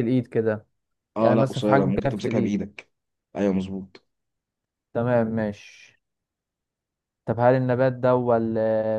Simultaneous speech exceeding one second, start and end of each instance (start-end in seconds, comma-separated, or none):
1.2-2.6